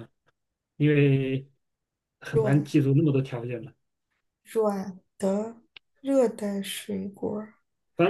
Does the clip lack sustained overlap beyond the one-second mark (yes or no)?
yes